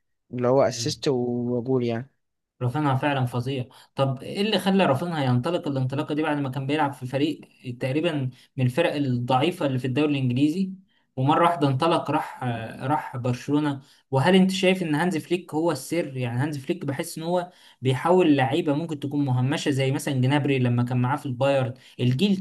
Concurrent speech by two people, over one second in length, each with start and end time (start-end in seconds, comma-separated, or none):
none